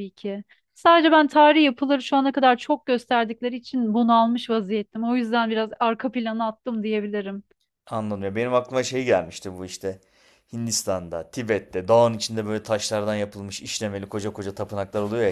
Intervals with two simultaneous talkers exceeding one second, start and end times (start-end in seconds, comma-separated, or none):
none